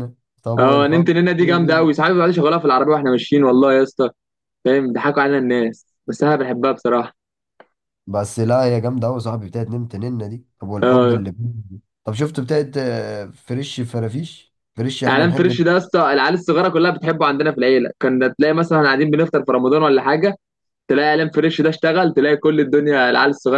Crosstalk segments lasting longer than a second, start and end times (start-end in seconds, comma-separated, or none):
0.6-1.9